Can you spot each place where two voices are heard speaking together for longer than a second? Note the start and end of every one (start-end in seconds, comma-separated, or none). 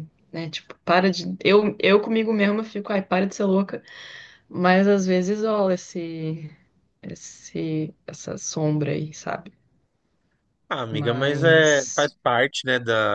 10.9-12.1